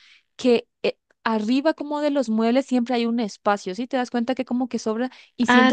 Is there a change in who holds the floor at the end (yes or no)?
no